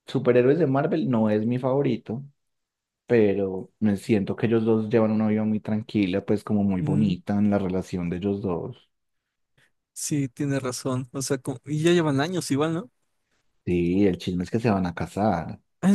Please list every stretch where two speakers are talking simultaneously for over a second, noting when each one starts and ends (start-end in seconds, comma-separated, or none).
none